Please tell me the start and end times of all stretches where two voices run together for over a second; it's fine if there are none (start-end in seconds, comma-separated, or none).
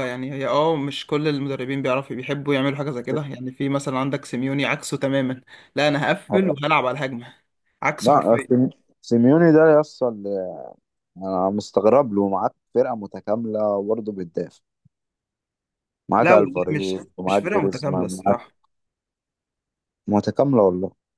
16.2-18.4